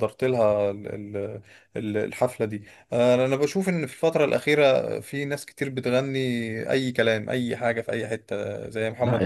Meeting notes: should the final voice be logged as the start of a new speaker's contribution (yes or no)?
yes